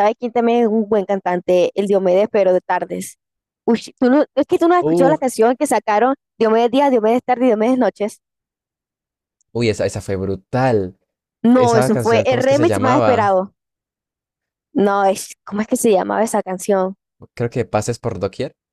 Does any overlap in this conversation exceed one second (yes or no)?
yes